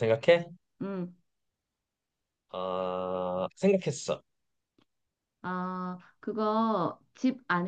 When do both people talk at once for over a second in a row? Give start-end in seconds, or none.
none